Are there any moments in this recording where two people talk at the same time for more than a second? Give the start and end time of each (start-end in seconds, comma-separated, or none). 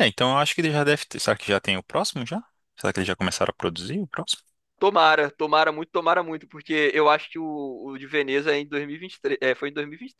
none